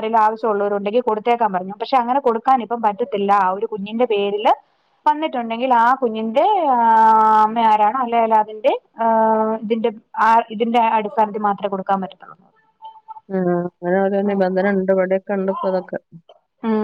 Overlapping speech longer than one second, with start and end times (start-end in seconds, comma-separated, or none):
none